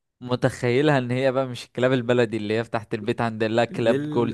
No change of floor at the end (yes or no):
no